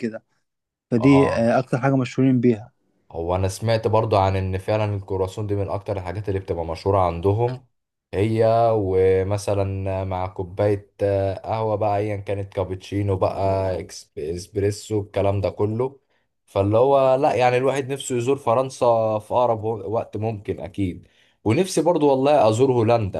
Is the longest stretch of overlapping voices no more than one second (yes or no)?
yes